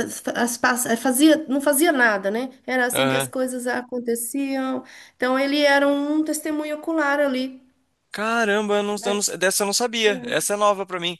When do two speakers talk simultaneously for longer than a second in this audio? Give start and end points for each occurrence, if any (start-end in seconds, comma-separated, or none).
none